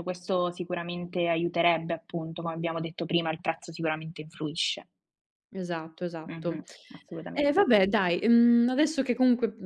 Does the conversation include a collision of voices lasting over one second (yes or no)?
no